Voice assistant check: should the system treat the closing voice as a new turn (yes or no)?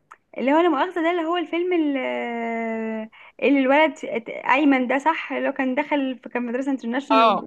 yes